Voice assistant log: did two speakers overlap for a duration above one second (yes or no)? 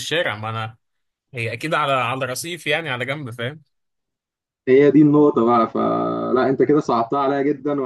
no